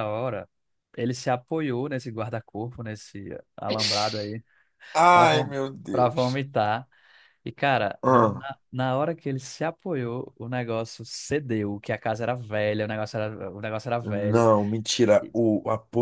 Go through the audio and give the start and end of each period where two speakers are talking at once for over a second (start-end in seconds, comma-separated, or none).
none